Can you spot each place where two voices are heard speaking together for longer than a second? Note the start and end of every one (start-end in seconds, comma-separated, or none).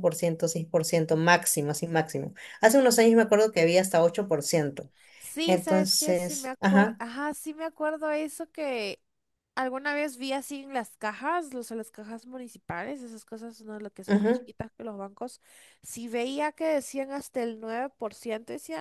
5.5-7.0